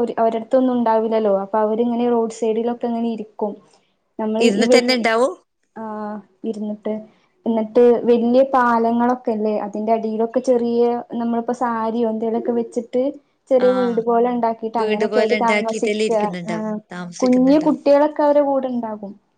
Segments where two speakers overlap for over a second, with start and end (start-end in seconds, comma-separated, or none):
14.8-16.2